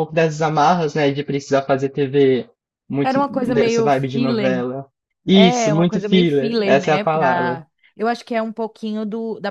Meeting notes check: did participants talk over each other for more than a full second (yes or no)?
yes